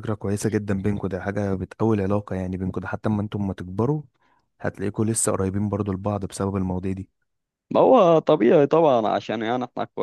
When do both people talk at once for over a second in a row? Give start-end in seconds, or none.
none